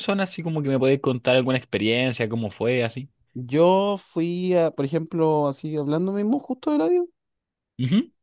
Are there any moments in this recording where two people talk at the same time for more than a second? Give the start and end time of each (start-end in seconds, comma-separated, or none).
none